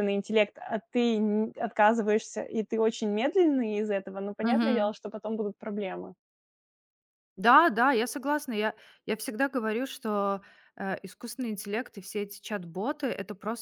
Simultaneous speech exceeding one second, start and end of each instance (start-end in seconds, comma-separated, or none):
none